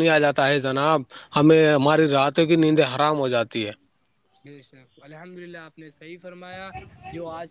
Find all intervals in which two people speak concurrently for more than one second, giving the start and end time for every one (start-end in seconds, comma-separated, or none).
none